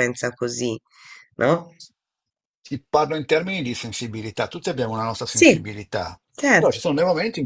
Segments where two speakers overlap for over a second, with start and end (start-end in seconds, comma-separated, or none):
none